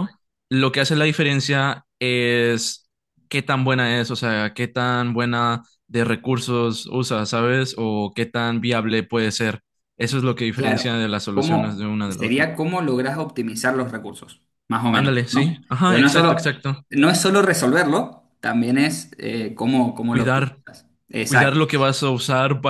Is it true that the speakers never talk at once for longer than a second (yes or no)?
no